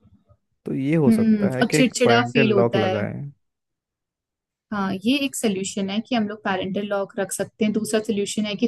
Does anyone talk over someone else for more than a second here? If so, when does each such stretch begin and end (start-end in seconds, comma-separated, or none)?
1.1-3.1